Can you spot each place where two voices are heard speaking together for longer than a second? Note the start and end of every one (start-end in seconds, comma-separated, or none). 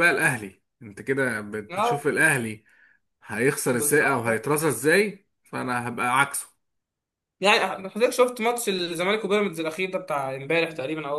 none